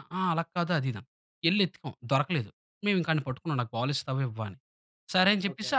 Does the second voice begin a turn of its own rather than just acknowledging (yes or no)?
no